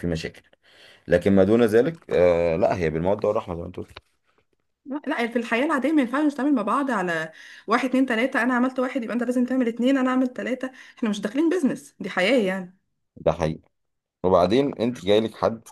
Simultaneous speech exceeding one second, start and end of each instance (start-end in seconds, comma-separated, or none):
none